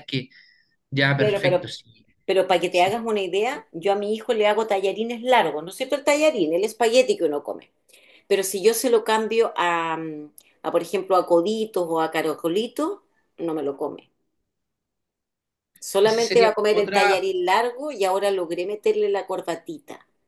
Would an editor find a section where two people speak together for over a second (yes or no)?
yes